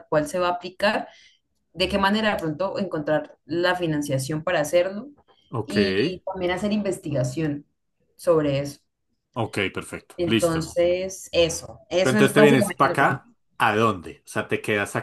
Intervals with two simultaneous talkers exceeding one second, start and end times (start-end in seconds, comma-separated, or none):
12.0-13.2